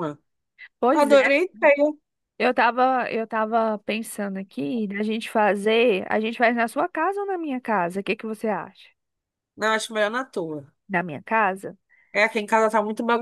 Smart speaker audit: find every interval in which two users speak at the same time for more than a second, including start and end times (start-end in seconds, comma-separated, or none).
none